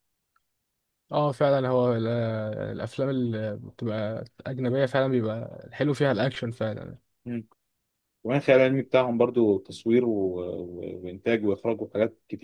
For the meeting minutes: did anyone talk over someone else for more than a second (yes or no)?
no